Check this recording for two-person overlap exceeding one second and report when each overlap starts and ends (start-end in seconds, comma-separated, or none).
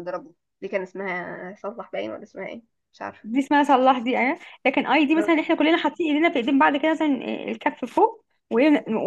none